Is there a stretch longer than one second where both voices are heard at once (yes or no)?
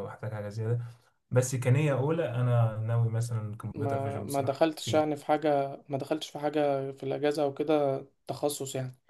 yes